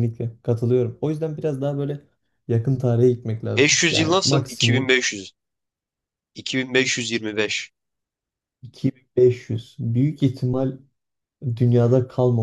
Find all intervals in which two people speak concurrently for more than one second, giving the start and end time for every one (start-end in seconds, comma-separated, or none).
3.5-5.0